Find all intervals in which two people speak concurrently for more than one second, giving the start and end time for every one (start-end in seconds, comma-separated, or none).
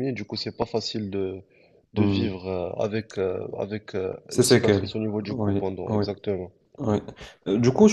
4.3-6.0